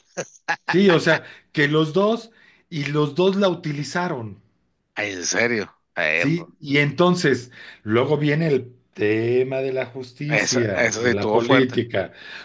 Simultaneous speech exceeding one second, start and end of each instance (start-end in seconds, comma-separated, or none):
10.3-11.8